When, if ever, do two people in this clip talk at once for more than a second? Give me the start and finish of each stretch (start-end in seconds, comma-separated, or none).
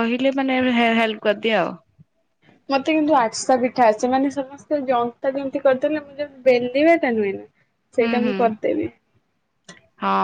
none